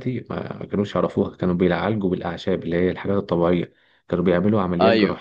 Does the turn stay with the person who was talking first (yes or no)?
yes